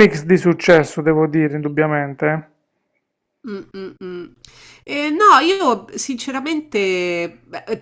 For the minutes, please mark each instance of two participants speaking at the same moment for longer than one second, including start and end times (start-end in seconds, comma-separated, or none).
none